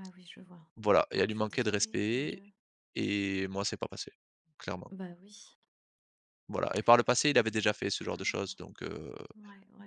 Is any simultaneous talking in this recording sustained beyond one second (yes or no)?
yes